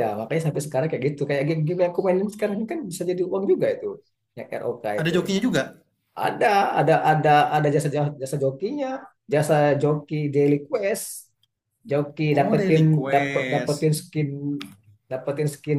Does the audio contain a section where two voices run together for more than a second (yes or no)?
yes